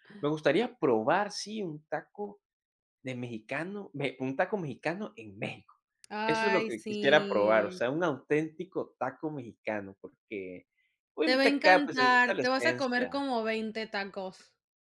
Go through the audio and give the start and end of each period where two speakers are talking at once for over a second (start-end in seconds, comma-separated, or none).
6.3-7.8, 11.3-13.3